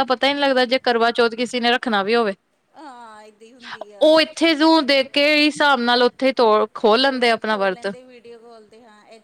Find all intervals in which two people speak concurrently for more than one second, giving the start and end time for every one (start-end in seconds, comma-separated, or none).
none